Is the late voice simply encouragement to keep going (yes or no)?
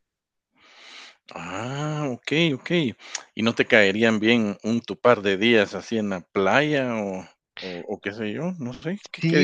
no